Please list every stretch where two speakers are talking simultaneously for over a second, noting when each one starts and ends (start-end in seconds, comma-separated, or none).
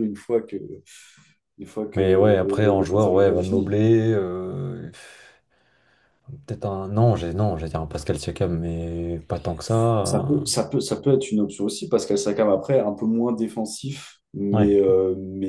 1.9-3.8